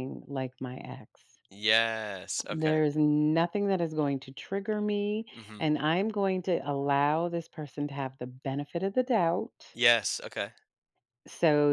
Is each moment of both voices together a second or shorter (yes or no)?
yes